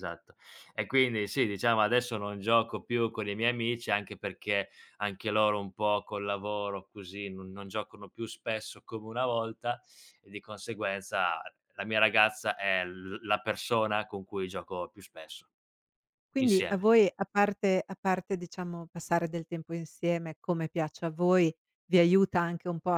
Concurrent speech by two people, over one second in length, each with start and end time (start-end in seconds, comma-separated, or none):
none